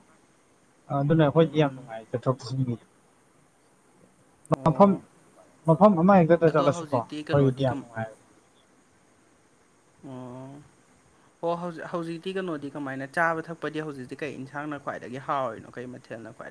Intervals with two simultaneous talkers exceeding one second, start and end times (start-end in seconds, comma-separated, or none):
6.5-7.8